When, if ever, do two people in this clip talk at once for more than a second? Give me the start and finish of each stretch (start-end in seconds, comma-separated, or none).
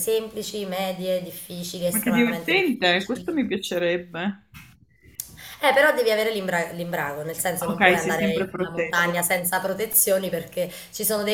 1.9-3.3, 7.7-9.1